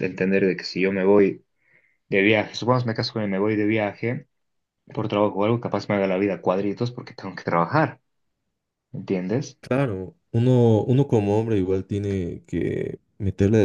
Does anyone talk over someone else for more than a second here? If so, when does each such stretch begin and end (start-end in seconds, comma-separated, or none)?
none